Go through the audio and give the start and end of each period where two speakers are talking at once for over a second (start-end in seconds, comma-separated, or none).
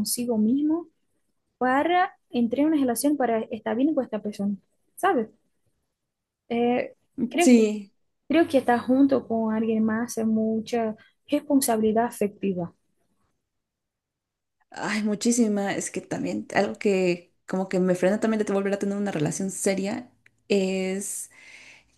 none